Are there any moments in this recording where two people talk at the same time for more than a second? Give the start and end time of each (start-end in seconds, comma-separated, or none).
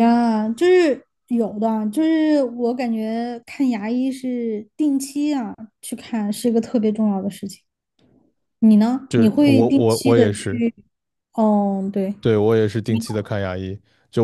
9.1-10.6